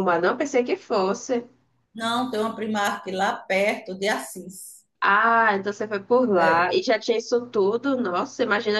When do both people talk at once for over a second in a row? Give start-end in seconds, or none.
none